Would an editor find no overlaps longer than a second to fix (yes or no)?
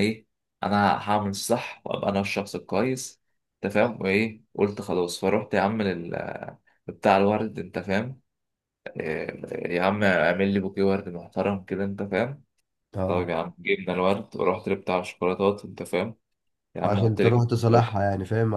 no